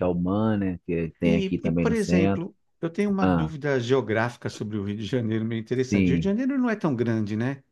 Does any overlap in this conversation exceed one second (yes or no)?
yes